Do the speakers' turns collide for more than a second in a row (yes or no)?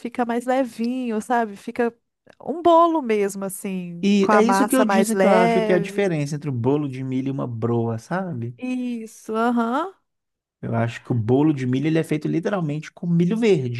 yes